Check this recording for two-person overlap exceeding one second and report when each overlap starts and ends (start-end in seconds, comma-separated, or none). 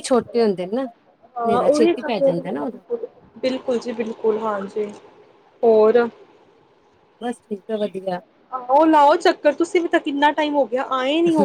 none